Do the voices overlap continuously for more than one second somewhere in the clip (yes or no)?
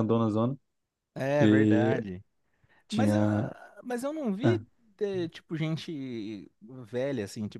no